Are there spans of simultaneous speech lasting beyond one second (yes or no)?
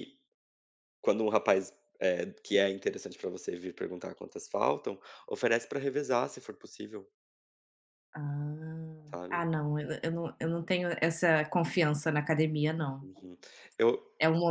no